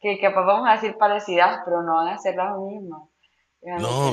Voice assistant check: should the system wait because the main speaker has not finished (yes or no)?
no